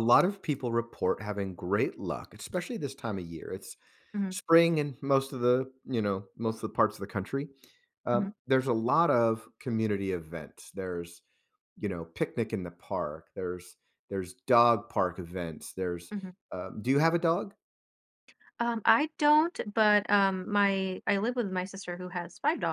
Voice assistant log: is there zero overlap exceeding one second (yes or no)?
yes